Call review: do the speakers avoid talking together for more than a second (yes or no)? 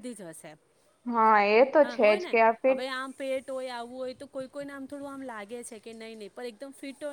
yes